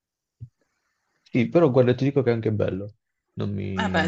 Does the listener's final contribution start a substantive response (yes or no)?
yes